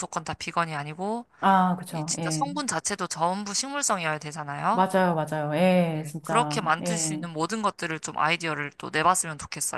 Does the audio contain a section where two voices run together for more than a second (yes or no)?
yes